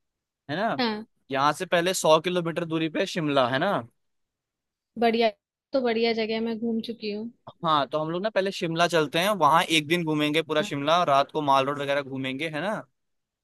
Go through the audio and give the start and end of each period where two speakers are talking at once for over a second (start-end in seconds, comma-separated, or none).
none